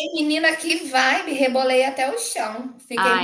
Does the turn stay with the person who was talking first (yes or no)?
no